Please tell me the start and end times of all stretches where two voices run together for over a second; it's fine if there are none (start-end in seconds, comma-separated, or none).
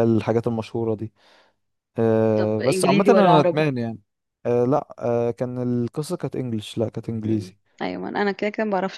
2.4-3.7